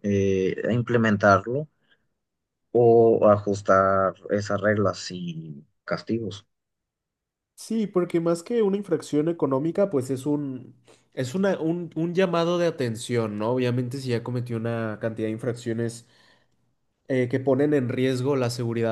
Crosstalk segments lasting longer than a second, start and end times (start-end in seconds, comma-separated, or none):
none